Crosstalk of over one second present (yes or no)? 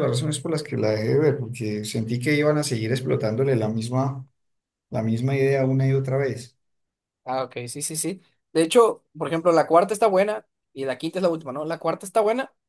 no